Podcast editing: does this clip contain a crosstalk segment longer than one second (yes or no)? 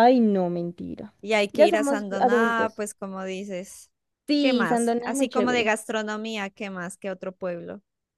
yes